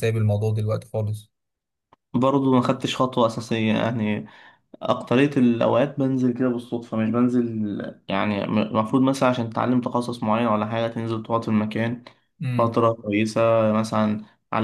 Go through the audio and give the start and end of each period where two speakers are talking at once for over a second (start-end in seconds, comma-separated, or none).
none